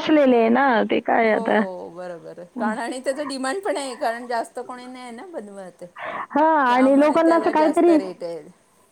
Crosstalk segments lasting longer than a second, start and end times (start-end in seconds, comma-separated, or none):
6.7-8.0